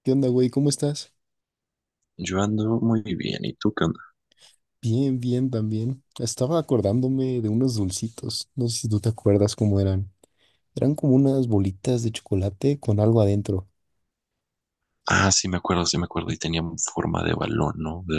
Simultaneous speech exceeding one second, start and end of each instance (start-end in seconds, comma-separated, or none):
none